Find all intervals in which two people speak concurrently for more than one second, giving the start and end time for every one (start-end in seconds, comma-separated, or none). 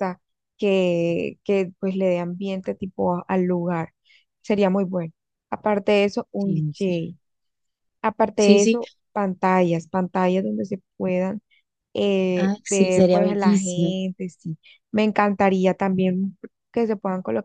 12.4-13.9